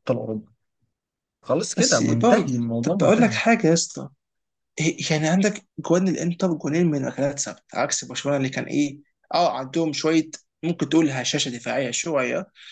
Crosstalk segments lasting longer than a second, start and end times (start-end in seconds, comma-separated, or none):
1.7-3.4